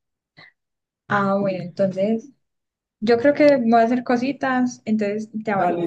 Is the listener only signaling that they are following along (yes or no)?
no